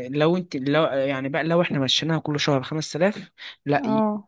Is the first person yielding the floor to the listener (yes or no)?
no